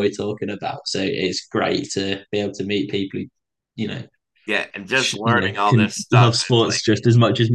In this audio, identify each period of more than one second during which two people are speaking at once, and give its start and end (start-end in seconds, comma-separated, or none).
4.9-6.8